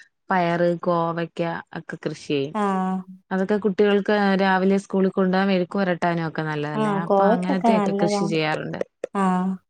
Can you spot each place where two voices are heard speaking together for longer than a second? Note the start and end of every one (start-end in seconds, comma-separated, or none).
6.8-8.4